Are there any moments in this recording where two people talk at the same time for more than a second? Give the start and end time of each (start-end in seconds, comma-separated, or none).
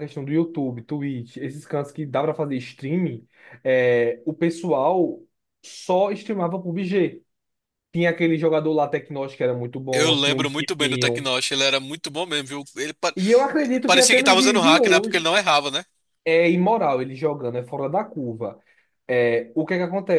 9.9-11.3, 13.9-15.3